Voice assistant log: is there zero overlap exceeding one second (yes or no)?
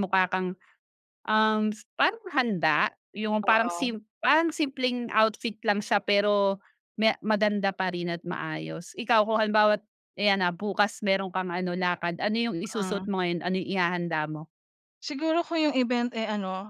yes